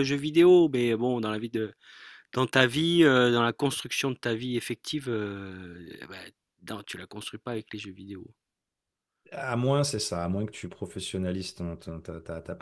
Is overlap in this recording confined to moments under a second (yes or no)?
yes